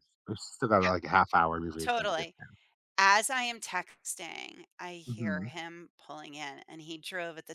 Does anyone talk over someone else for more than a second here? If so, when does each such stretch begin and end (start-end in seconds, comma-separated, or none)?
none